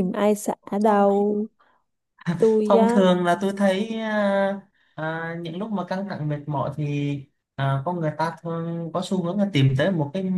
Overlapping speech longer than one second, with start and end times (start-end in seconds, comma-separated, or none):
none